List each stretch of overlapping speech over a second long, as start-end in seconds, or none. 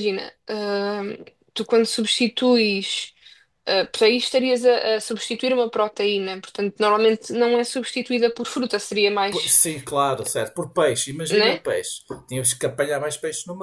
none